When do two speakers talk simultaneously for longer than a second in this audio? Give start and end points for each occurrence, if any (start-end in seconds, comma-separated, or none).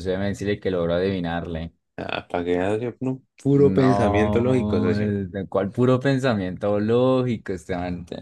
3.6-5.1